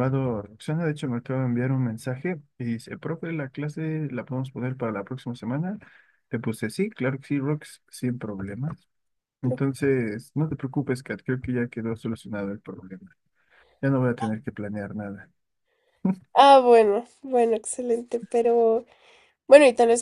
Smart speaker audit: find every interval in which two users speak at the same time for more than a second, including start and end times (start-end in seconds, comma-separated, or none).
none